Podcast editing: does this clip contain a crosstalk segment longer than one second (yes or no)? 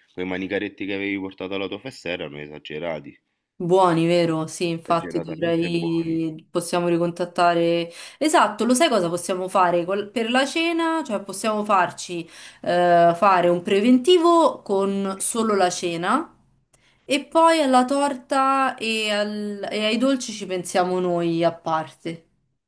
yes